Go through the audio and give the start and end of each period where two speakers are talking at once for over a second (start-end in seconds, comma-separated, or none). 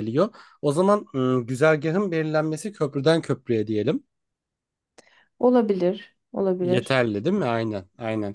none